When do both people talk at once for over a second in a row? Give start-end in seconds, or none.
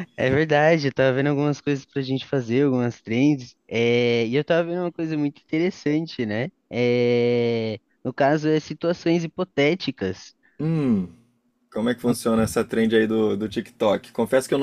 none